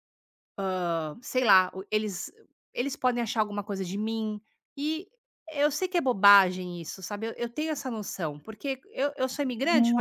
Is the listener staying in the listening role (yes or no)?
no